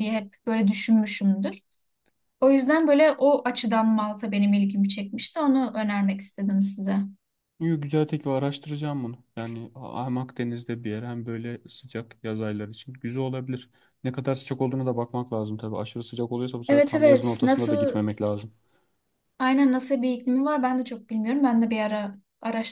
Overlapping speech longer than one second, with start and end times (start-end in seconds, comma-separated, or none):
16.7-18.0